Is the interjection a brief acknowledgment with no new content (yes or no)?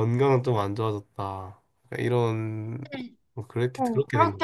no